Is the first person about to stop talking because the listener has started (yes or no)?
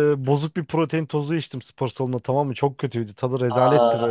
no